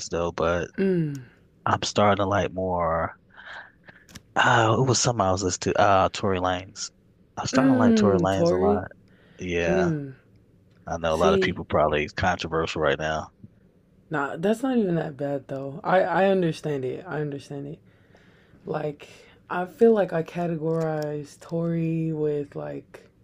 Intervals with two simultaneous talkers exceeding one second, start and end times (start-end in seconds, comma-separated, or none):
7.5-8.8